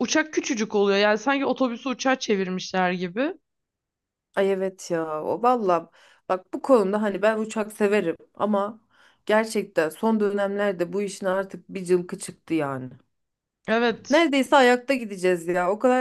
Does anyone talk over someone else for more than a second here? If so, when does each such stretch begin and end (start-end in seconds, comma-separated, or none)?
none